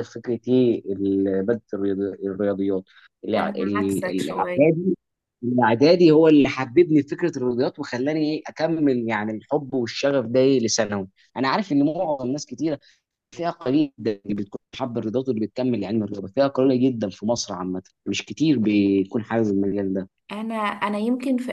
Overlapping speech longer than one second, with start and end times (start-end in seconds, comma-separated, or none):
3.4-4.7